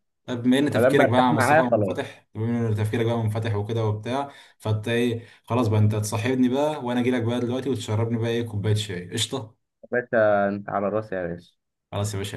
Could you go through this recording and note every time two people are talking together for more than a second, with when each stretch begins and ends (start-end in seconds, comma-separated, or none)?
0.7-2.1